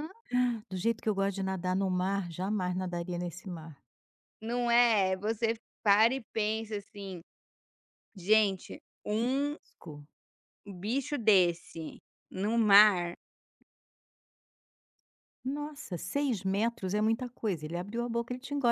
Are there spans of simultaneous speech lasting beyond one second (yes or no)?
no